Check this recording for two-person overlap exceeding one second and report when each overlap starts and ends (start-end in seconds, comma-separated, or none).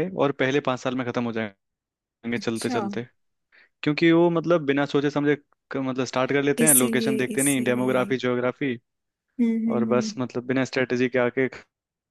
6.6-8.1